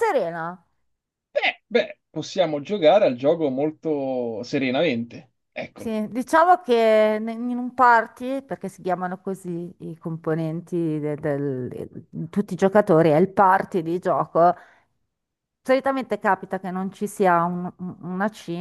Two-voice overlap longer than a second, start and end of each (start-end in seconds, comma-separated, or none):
none